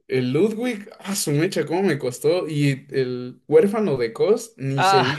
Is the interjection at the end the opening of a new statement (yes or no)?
yes